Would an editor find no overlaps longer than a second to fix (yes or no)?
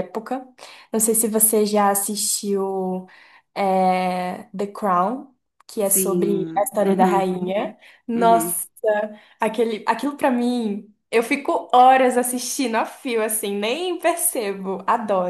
no